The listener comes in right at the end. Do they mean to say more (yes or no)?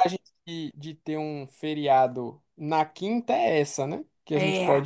no